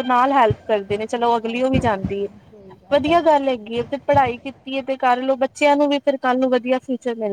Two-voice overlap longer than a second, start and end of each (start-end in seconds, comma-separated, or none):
1.5-3.3